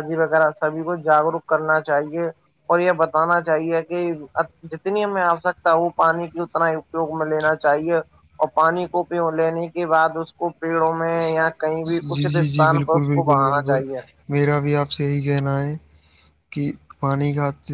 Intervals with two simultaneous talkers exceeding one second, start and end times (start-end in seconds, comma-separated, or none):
12.2-13.8